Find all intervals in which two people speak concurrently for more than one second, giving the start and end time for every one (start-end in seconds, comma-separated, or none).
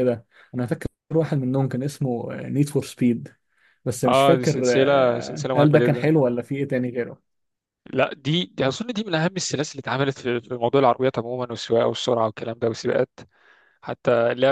4.1-6.1